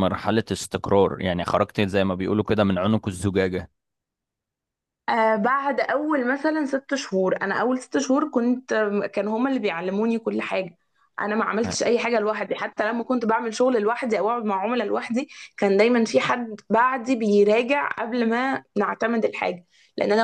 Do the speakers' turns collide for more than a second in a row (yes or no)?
no